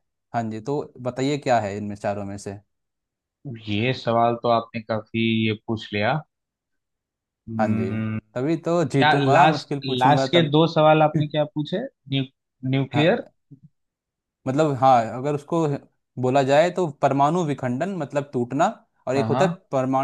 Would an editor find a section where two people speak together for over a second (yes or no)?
yes